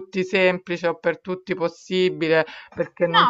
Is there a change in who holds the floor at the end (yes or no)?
yes